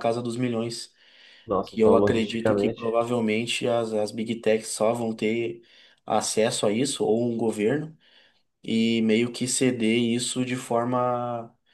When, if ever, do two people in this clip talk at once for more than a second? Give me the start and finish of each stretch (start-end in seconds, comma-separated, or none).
1.6-3.0